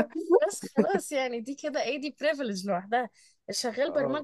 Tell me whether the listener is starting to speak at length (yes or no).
no